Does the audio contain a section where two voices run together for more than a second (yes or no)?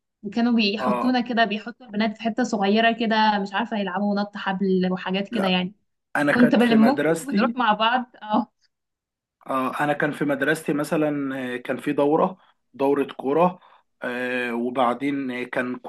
yes